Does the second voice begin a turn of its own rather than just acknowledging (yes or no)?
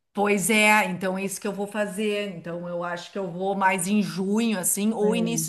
no